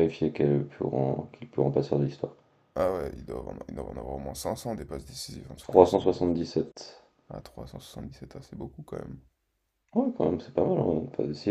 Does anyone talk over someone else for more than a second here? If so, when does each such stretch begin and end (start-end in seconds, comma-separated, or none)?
none